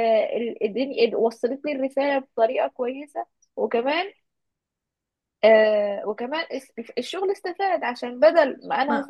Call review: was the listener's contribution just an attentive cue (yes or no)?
yes